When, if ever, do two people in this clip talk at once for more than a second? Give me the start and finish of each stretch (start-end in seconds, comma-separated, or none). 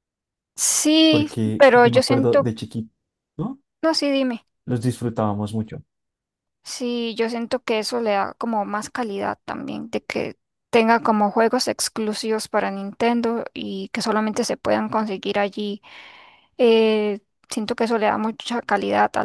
1.1-2.5